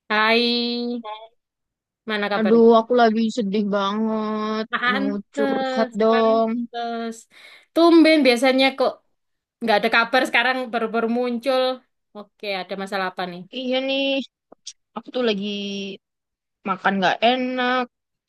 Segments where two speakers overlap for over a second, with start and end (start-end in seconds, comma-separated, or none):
4.7-6.5